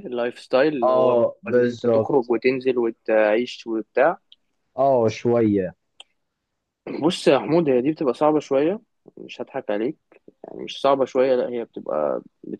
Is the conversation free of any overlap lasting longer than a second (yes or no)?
no